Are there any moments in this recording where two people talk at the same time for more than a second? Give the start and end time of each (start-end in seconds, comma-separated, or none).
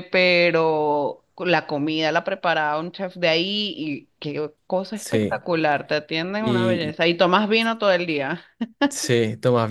none